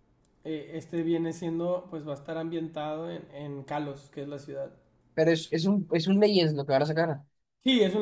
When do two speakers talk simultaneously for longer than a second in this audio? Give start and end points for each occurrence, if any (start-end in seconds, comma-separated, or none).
none